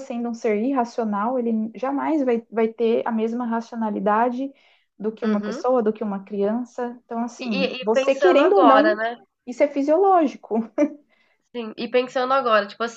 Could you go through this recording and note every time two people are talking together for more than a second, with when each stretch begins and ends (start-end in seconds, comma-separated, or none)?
7.4-9.0